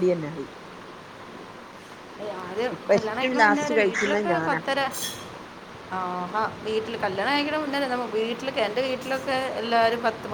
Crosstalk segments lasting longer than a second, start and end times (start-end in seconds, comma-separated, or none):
2.8-4.6